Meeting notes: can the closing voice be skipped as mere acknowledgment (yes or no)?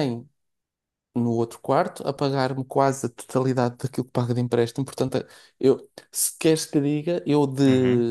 yes